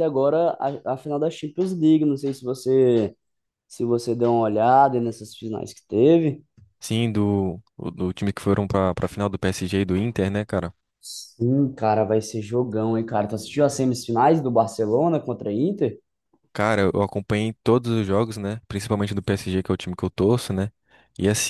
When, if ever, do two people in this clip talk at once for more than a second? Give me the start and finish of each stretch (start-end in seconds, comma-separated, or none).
none